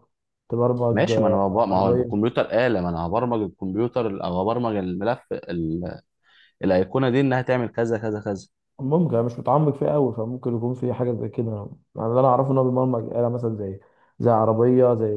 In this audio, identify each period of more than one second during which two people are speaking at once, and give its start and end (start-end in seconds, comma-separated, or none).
0.9-2.3